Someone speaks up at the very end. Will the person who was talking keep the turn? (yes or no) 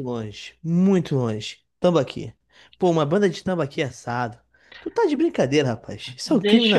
no